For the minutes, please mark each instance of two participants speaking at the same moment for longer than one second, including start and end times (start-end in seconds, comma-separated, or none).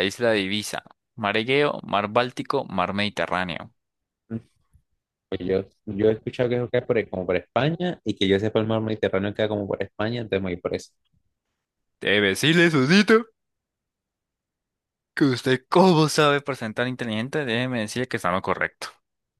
none